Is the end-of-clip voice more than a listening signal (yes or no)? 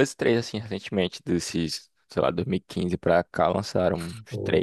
yes